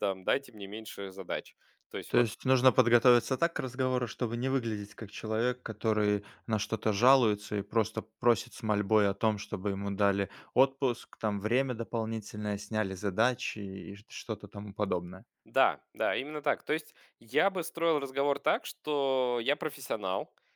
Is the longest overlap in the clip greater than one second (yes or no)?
no